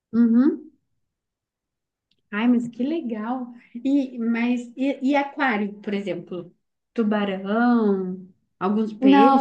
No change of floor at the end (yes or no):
no